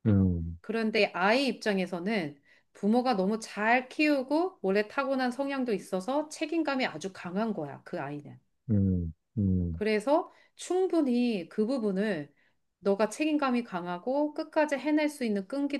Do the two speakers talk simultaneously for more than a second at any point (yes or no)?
no